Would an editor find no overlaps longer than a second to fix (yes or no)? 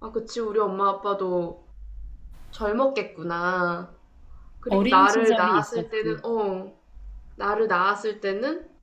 no